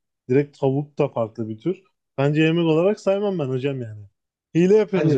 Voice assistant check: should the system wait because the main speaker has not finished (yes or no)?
no